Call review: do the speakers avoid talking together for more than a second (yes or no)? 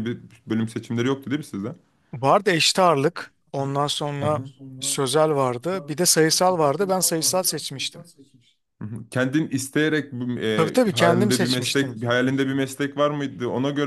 no